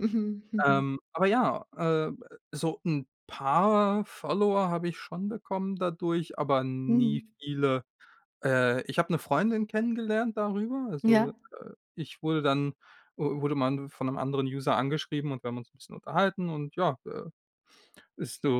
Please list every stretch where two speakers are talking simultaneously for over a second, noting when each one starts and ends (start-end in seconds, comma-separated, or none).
none